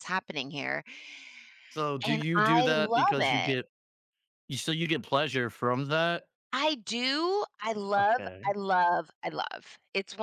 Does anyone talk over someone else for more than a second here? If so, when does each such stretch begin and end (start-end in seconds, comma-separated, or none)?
2.1-3.6